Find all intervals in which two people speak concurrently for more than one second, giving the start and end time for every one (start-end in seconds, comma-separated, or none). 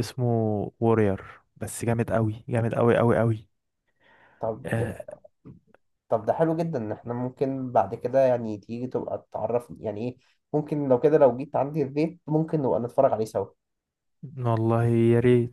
none